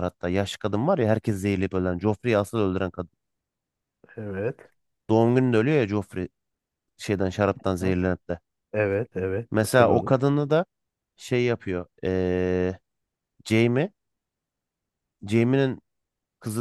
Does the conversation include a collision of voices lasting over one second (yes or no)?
no